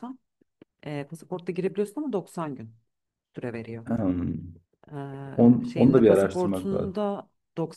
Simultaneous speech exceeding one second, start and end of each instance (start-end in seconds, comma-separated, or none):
5.4-7.0